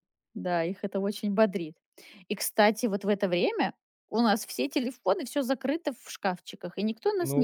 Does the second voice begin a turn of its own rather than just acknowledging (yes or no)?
yes